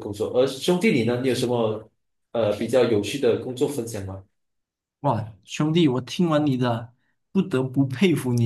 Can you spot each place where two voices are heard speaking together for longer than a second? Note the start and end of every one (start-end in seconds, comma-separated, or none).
none